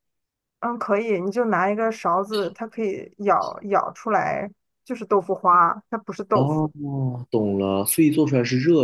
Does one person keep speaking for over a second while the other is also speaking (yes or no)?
no